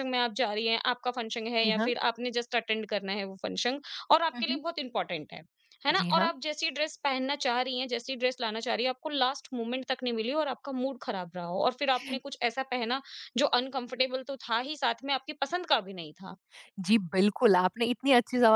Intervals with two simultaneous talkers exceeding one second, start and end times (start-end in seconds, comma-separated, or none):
none